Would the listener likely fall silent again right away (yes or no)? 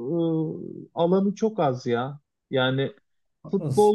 yes